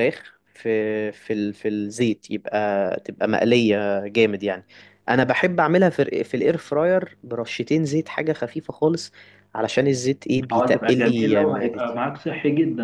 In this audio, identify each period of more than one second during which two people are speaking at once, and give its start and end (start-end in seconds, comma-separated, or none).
10.5-12.0